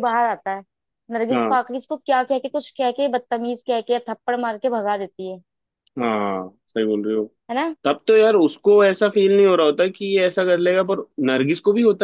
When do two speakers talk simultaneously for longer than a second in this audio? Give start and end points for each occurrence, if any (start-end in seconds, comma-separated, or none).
none